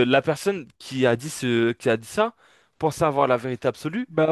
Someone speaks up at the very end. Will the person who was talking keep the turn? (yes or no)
no